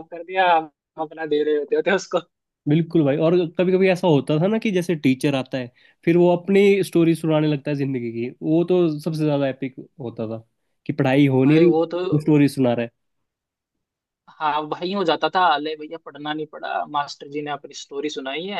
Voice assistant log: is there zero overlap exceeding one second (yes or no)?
yes